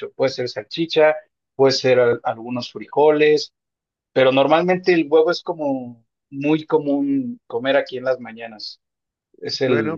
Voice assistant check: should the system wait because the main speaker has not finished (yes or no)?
yes